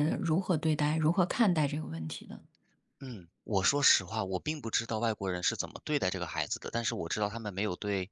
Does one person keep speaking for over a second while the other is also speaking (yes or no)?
no